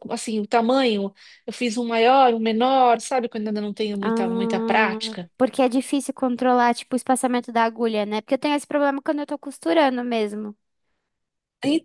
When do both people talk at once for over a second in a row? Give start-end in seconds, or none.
4.0-5.3